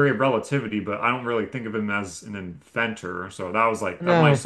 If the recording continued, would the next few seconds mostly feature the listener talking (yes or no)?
no